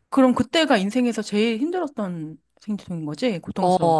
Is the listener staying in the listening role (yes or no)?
no